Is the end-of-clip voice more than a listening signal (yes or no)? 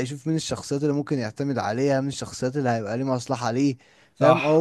yes